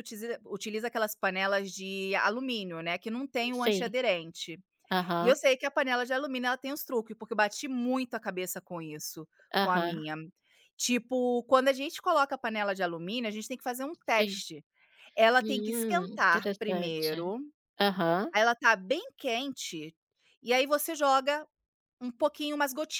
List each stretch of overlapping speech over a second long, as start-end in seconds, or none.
15.4-17.3